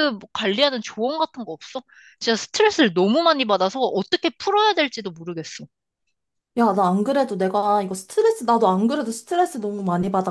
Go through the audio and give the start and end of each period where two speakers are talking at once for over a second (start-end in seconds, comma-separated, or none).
none